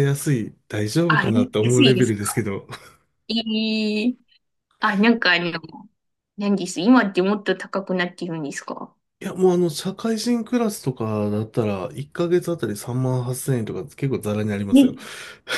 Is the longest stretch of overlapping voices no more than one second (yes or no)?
no